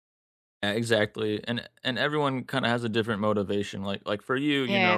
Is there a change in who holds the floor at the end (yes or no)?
no